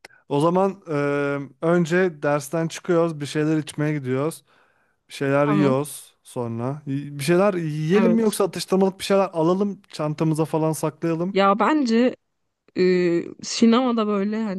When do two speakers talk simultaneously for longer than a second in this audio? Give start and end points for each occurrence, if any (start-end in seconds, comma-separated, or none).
none